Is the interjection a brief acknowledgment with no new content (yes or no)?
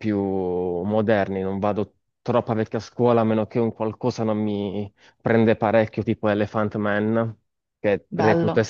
yes